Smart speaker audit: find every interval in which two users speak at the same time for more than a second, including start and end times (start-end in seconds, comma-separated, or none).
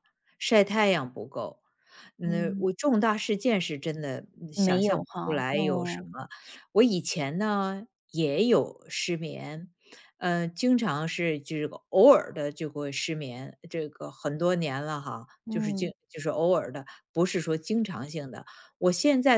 4.5-6.1